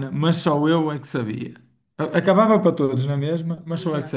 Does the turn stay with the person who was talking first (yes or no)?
yes